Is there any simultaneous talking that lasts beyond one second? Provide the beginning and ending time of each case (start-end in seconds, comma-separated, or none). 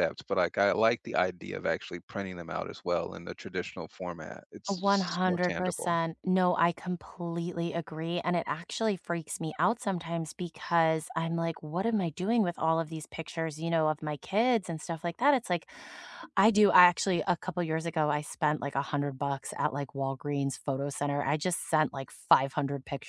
4.7-6.0